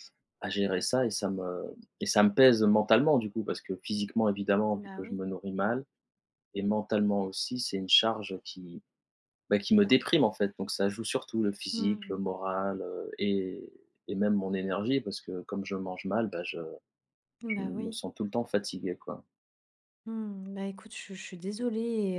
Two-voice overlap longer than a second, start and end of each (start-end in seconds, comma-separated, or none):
none